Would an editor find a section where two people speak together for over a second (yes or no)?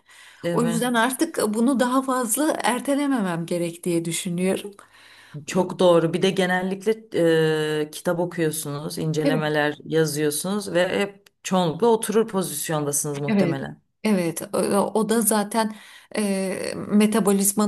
no